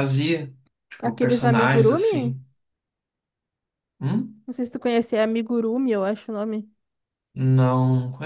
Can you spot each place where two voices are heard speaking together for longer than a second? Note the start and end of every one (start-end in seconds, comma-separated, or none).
1.0-2.3